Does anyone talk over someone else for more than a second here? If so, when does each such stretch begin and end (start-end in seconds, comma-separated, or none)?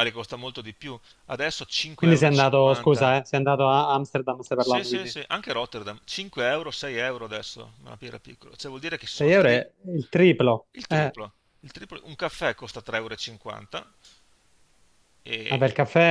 1.9-3.1